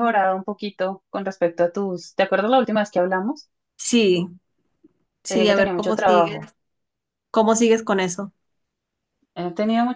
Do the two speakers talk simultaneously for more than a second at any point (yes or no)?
yes